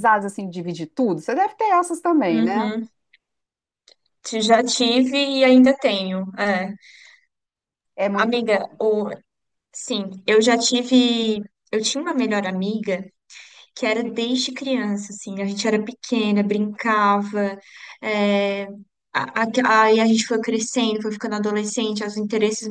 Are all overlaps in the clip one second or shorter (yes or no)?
yes